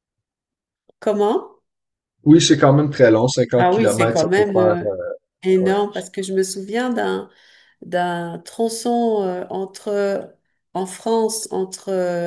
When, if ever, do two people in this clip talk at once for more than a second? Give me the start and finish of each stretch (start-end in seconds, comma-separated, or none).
3.6-4.9